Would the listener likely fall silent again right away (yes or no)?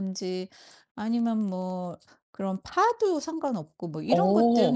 yes